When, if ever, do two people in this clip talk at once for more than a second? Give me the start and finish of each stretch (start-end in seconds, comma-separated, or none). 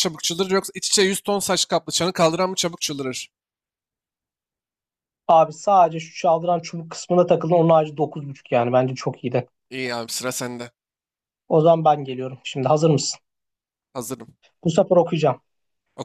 none